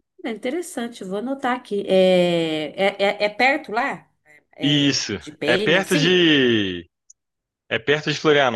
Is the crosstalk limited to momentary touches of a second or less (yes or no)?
no